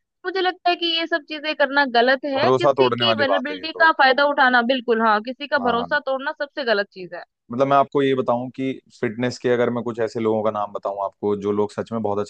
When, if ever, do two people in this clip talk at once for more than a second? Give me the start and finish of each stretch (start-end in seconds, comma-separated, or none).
2.4-3.9